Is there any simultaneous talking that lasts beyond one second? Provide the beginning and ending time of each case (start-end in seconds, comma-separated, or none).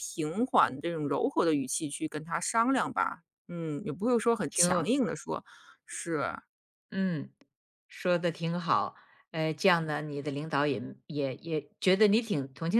none